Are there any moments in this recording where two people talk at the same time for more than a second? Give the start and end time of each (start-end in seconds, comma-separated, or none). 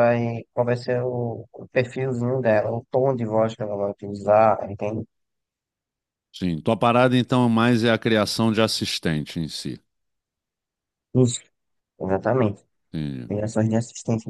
none